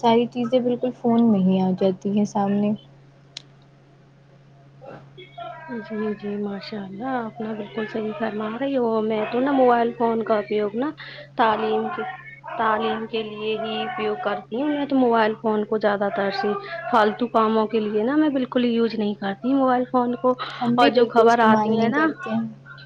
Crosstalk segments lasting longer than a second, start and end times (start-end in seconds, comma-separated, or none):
20.6-22.1